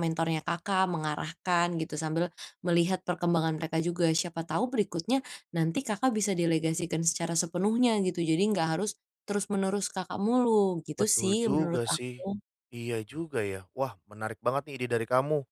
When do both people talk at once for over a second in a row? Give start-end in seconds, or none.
11.0-12.3